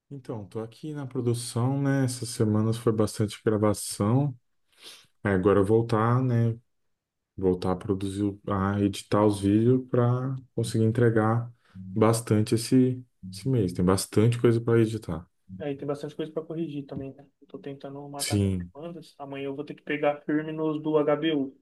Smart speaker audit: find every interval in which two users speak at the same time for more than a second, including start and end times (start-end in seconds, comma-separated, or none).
none